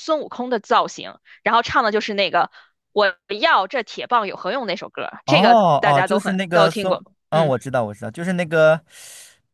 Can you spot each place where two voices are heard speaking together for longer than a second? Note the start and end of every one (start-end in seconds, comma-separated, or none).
5.2-7.5